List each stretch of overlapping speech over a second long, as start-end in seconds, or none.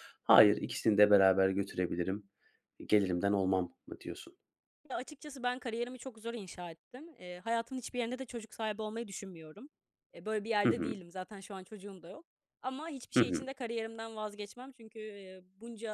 none